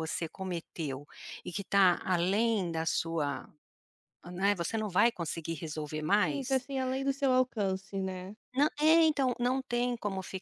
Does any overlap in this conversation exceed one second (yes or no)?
no